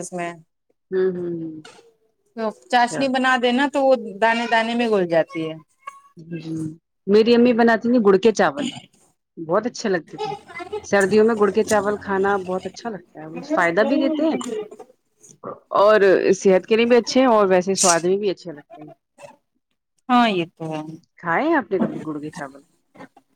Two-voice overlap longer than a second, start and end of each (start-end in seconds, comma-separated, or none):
none